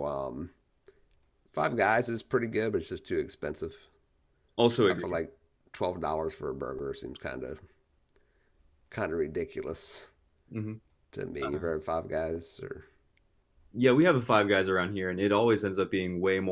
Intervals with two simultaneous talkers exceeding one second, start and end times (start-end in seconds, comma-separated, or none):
none